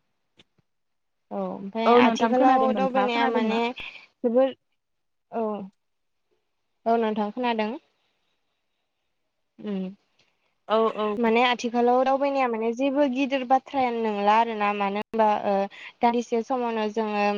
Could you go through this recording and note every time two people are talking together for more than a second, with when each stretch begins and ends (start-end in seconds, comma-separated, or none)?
1.9-3.6